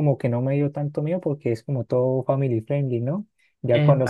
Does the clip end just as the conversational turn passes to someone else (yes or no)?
no